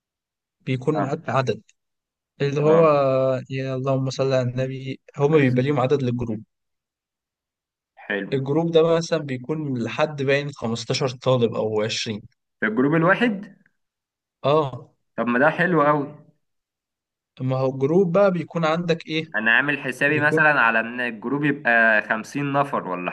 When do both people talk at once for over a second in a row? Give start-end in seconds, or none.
none